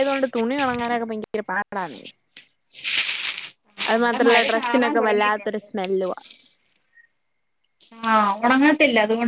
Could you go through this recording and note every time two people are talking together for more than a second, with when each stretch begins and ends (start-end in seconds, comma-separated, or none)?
3.9-5.7